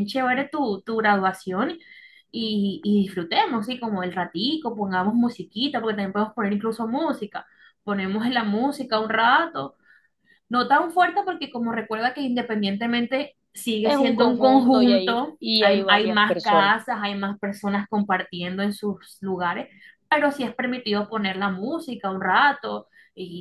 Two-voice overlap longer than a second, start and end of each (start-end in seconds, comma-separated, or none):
13.8-16.8